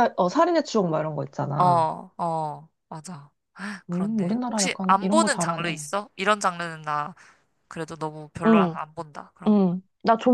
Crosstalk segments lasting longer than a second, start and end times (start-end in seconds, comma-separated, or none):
3.9-5.8